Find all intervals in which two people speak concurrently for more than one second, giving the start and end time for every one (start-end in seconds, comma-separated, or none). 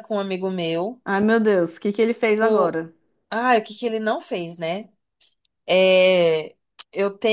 none